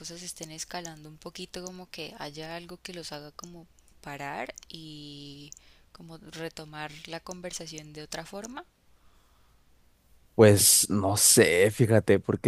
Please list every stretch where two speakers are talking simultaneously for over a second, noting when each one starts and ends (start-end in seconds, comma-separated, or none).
none